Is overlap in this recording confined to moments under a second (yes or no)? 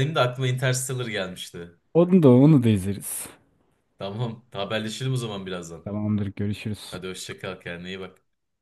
yes